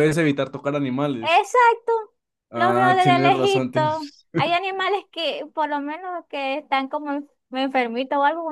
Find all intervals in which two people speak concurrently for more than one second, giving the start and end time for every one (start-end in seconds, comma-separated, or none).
2.5-4.3